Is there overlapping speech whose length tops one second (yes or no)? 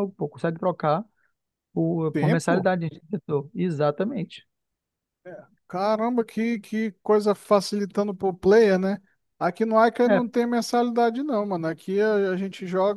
no